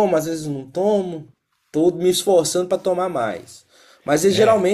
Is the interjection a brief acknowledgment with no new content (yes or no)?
yes